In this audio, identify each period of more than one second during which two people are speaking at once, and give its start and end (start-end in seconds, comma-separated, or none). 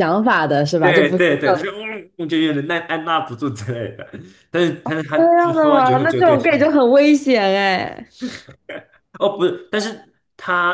5.2-6.7